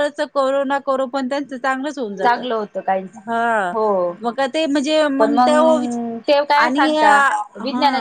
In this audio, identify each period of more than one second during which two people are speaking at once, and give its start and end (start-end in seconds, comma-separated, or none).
none